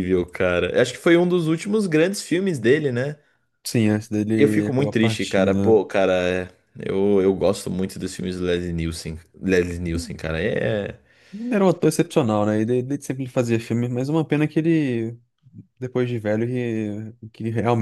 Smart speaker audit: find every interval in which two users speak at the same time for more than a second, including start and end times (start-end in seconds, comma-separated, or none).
4.3-5.8